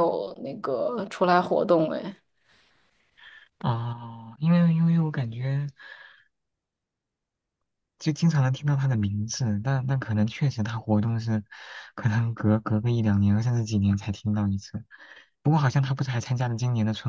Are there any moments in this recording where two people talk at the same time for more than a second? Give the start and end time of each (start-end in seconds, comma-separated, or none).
none